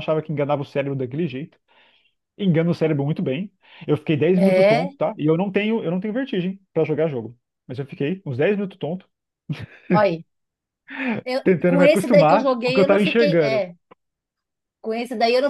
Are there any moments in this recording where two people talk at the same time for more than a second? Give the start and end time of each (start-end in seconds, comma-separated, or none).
11.4-13.6